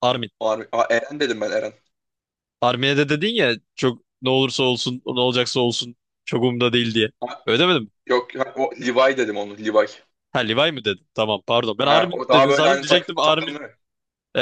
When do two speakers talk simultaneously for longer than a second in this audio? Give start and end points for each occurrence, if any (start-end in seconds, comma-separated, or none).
11.8-13.6